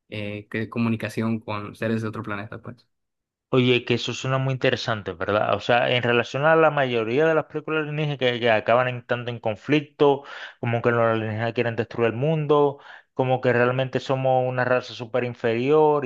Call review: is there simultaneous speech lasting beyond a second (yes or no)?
no